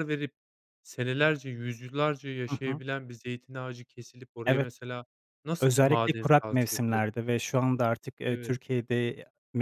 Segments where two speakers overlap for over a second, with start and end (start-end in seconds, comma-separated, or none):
5.6-7.2